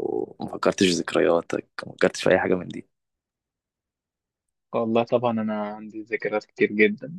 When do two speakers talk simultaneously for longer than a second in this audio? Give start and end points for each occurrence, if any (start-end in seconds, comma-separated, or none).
none